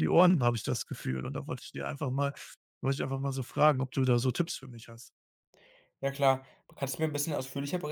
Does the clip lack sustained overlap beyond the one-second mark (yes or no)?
yes